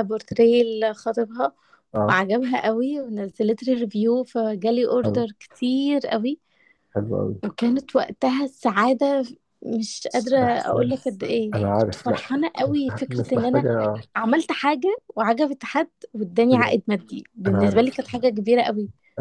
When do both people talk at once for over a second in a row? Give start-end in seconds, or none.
10.4-12.2